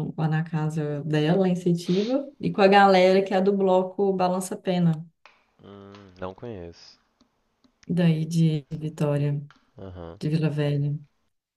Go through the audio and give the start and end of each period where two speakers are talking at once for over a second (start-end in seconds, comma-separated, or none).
none